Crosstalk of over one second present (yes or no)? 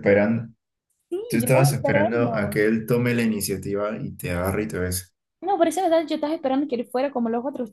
yes